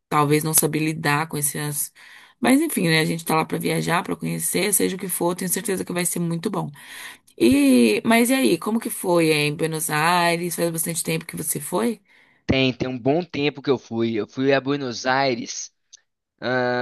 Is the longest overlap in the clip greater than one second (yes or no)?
no